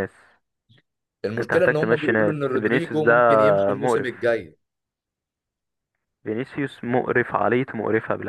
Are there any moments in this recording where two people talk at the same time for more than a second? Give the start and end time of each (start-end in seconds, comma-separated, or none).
1.4-3.1